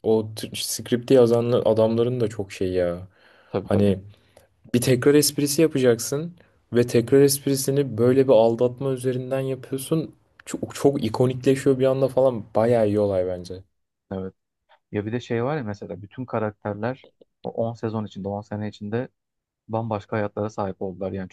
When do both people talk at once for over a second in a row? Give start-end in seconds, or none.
none